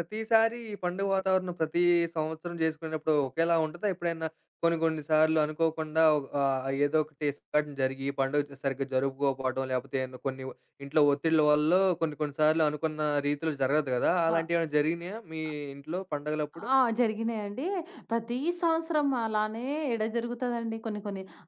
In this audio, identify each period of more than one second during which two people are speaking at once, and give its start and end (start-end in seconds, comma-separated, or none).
none